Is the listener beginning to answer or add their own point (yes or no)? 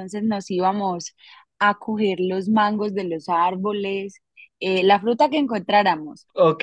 no